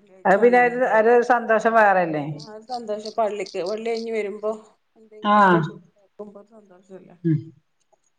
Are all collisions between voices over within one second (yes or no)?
yes